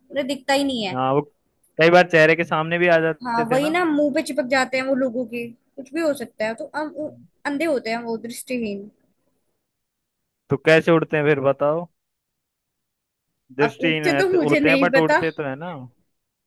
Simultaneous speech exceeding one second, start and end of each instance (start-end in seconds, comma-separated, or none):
13.6-15.2